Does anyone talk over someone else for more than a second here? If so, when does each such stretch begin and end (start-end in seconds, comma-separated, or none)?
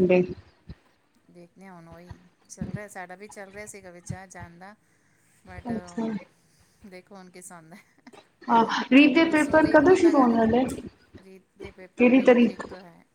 9.2-10.6